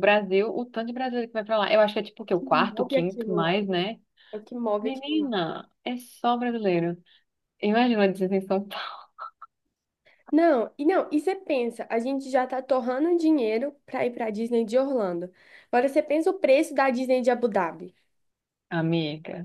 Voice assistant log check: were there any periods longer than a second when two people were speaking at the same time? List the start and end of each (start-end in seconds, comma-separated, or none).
2.2-3.6